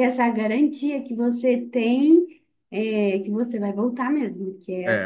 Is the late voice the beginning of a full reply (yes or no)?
yes